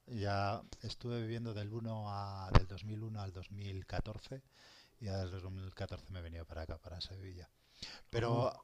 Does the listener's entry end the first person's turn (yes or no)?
no